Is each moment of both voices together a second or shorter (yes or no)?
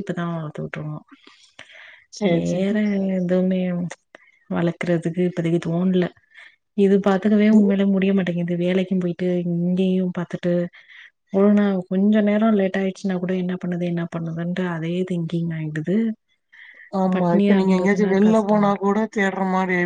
no